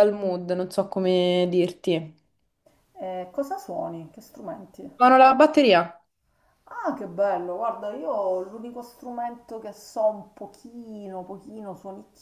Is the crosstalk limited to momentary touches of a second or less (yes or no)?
yes